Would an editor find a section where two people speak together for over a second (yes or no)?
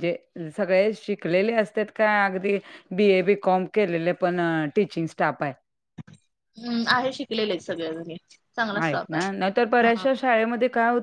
no